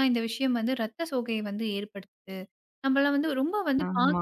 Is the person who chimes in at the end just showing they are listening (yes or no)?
yes